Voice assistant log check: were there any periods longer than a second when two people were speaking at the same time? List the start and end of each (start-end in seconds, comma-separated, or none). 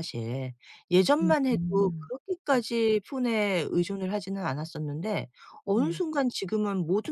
1.2-2.6